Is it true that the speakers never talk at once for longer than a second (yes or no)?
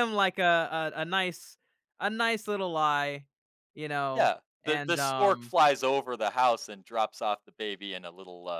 no